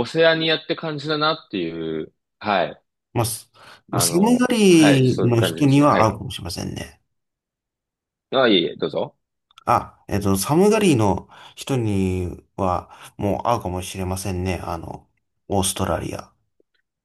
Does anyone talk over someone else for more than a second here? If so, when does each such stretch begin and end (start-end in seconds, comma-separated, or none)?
3.9-6.1